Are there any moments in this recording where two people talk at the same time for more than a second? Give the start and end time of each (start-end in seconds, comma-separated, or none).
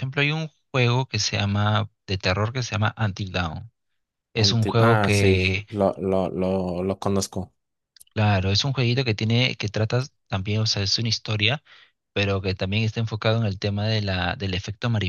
4.4-5.7